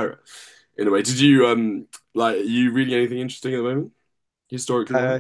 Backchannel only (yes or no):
no